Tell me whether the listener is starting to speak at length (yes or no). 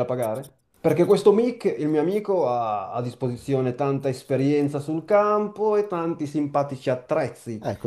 yes